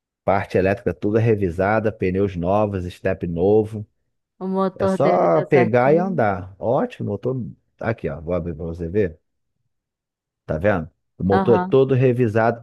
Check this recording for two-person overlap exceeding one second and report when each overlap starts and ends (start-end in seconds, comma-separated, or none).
4.8-6.3